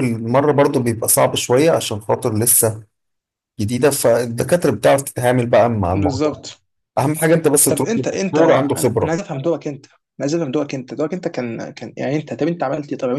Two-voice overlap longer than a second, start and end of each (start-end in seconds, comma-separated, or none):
7.7-9.2